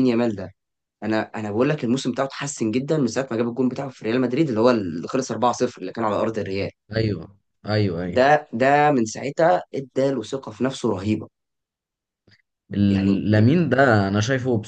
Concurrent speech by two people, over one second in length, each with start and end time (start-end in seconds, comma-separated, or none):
none